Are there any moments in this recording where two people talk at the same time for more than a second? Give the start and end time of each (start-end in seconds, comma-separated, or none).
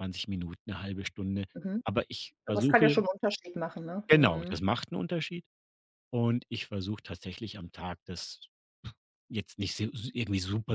none